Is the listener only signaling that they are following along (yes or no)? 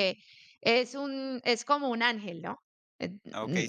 no